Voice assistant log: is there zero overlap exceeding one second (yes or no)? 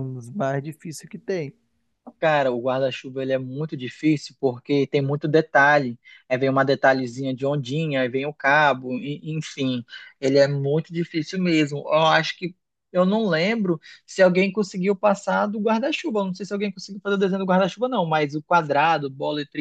yes